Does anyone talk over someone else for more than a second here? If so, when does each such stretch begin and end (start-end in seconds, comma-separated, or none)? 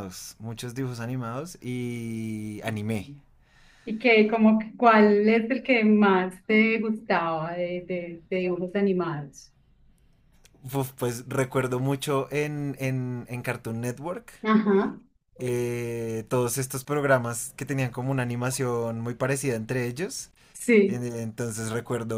none